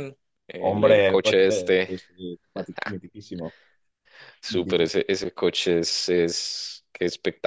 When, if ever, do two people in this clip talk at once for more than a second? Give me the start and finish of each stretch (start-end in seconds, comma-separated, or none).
0.6-1.9